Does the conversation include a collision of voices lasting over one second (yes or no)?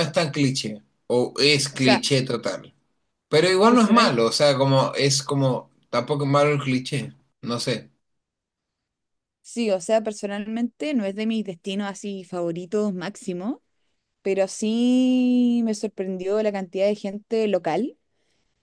no